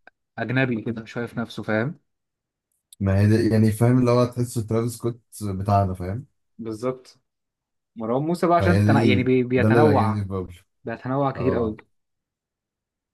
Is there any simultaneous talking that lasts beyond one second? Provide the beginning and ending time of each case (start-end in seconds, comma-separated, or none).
8.6-10.2